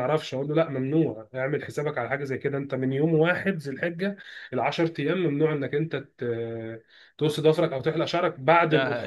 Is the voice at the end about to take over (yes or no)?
yes